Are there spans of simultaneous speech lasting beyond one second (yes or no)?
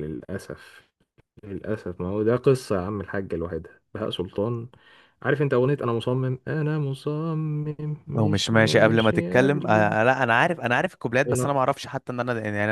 yes